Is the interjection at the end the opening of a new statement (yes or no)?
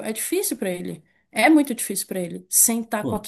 no